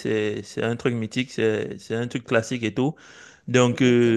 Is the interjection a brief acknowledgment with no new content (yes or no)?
yes